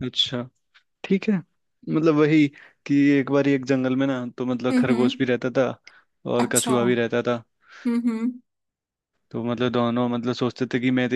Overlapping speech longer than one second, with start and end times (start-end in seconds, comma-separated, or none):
none